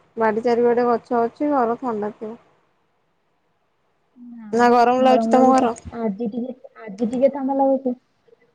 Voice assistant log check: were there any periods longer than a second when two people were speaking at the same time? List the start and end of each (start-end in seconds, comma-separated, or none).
none